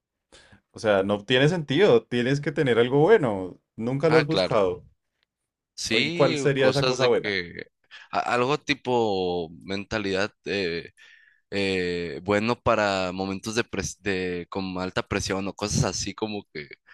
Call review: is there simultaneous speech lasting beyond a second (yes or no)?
yes